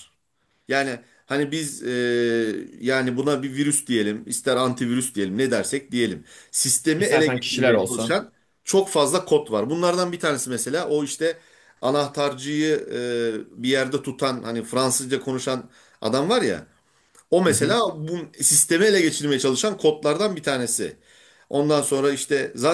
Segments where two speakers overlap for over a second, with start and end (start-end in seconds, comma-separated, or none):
7.0-8.2